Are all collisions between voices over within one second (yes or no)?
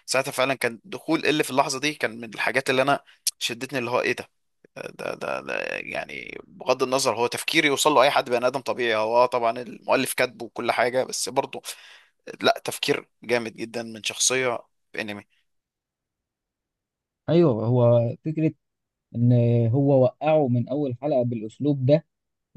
yes